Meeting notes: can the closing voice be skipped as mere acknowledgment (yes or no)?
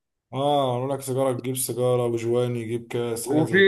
no